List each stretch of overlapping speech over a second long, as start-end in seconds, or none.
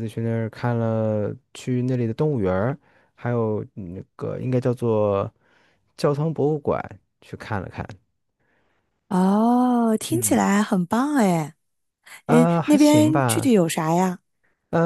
12.3-13.5